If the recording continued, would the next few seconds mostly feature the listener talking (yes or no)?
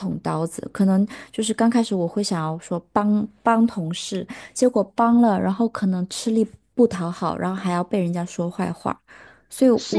yes